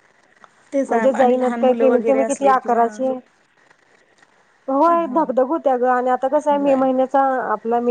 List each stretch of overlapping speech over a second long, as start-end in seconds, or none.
0.9-2.8